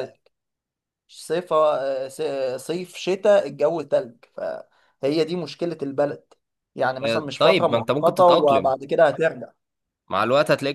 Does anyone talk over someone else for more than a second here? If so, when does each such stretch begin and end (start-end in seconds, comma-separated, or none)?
7.0-8.7